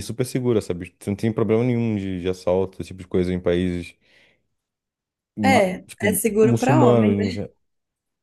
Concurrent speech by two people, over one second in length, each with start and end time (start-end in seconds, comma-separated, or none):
5.4-7.4